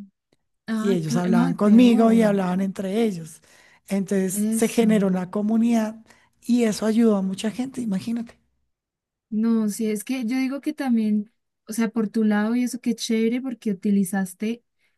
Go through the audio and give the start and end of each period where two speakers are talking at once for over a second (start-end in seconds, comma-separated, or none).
0.8-2.4